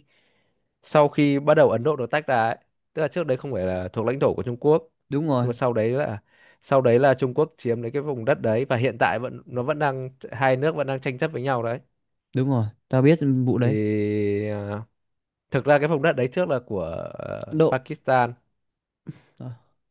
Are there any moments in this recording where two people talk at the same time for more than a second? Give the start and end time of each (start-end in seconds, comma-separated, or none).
none